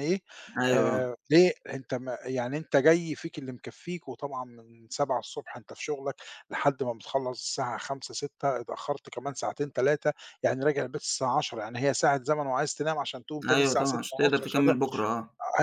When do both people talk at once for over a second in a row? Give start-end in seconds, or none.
13.5-14.7